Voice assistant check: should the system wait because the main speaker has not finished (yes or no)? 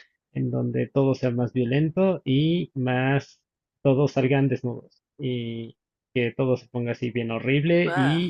yes